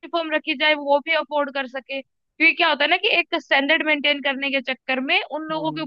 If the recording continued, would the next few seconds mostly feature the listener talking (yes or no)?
no